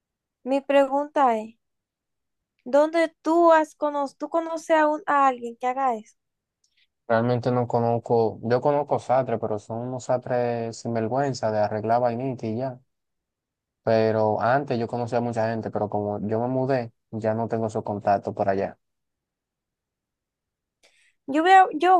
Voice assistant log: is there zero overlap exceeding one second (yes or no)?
yes